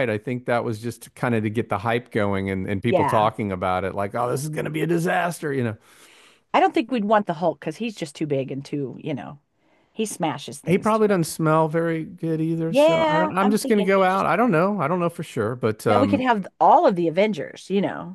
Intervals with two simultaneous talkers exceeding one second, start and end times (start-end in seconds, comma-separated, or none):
12.7-14.3